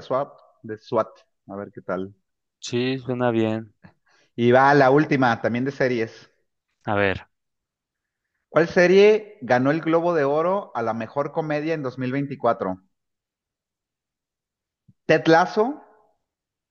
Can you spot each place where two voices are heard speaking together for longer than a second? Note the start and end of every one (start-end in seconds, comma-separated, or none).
none